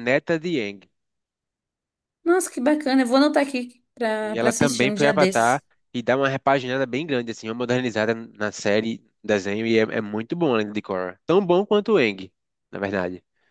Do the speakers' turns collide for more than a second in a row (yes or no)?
yes